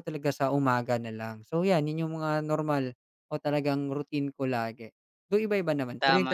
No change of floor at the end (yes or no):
no